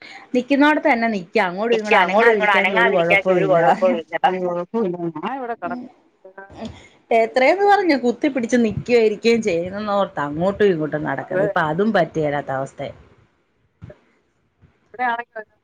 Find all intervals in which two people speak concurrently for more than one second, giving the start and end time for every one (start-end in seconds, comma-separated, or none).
1.8-3.6